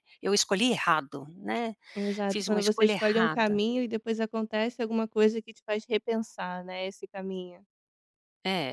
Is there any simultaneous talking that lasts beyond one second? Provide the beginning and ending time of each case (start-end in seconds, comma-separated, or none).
2.3-3.6